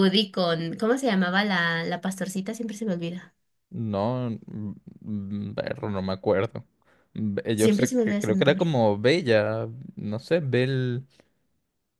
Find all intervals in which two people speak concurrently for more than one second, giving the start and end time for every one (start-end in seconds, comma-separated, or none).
7.5-8.8